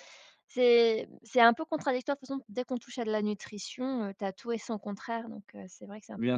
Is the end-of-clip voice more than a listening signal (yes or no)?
yes